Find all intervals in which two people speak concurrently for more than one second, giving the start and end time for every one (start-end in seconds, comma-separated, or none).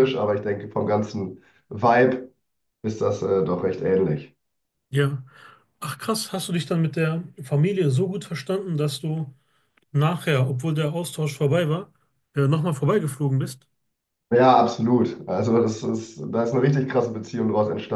none